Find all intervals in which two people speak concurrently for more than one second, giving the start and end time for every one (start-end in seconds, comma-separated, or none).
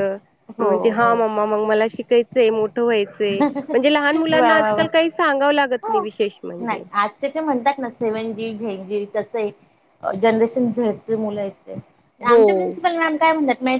3.5-4.8